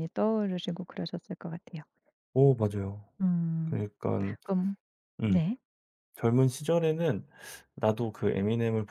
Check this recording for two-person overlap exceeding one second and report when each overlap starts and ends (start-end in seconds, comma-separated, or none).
none